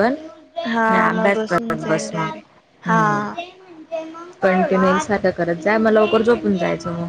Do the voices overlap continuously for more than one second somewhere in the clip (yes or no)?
yes